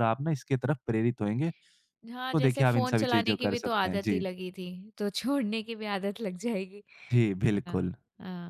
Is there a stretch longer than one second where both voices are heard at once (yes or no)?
yes